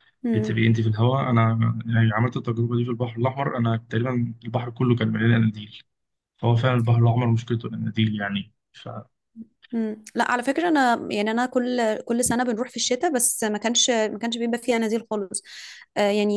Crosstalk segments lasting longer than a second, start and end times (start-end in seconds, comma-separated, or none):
none